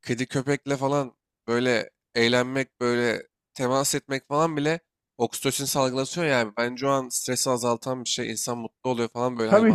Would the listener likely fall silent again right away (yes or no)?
no